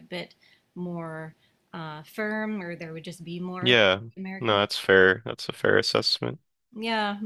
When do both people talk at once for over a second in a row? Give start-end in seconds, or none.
none